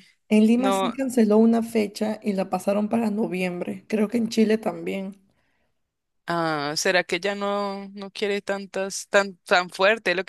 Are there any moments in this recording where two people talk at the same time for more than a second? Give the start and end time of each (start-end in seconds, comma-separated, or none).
none